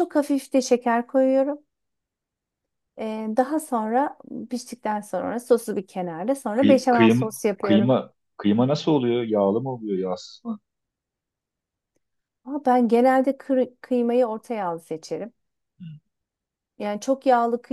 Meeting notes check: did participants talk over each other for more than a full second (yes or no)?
yes